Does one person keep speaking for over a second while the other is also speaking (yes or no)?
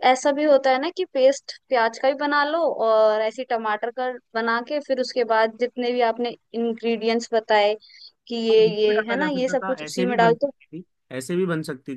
yes